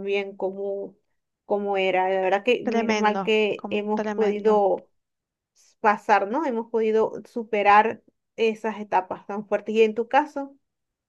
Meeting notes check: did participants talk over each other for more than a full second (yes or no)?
yes